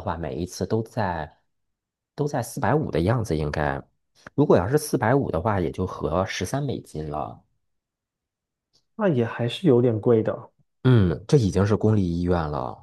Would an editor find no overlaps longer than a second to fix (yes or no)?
yes